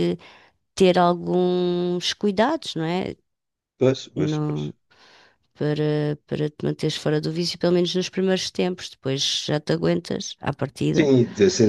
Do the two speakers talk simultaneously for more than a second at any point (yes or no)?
no